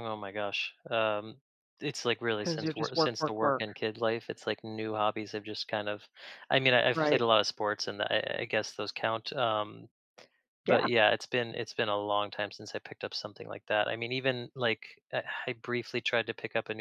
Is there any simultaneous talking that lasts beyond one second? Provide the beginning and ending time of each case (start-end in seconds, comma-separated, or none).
2.4-3.6